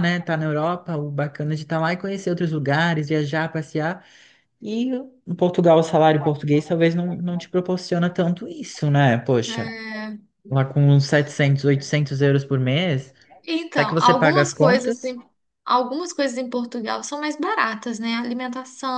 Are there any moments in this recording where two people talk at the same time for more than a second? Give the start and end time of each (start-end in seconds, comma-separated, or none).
13.7-15.0